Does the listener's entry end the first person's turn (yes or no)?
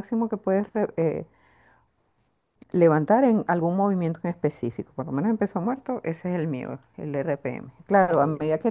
no